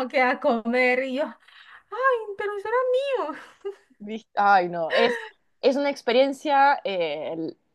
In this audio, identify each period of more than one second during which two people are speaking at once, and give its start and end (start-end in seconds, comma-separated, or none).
none